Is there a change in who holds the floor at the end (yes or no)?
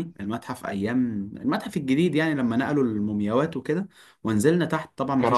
no